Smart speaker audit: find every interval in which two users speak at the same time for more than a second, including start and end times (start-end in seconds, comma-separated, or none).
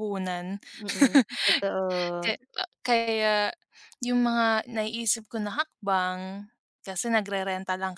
none